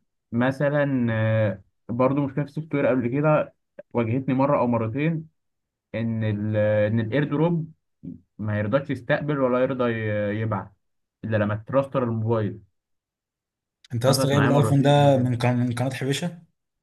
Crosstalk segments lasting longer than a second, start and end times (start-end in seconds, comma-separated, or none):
14.1-15.3